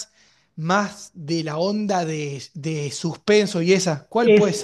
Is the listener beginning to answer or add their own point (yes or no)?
yes